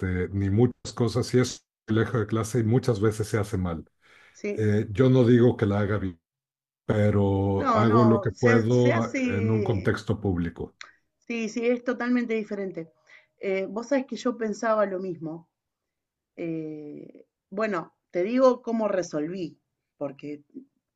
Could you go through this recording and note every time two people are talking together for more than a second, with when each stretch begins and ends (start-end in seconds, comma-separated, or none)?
7.6-9.9